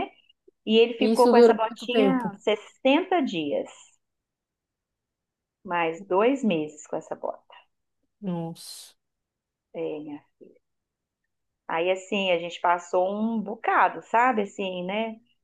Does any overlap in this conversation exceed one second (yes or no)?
yes